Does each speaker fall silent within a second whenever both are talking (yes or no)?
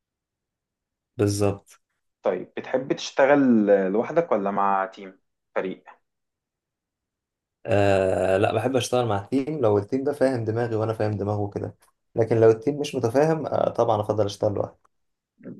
yes